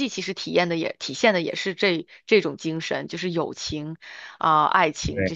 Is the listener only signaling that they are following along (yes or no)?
no